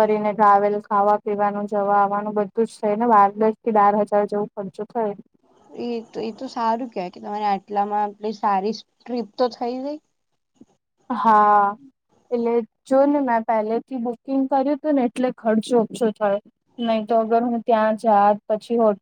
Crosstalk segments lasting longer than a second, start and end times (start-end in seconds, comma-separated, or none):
none